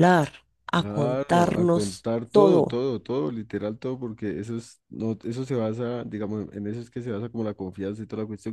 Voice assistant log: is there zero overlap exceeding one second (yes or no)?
no